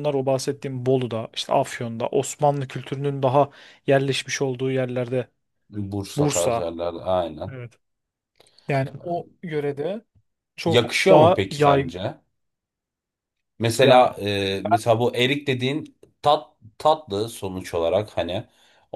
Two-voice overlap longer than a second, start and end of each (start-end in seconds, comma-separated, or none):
10.7-11.9